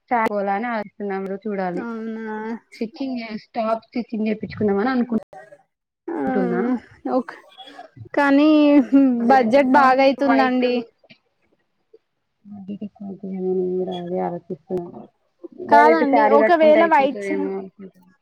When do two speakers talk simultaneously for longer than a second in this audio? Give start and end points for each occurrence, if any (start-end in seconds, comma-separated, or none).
15.7-17.4